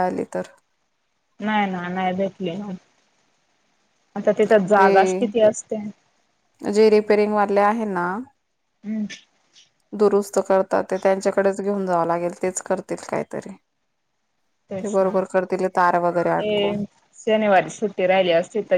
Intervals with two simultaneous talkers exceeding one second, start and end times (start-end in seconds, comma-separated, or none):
none